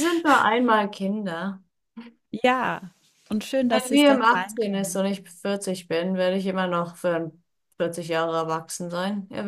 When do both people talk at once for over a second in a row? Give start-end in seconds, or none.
3.7-5.0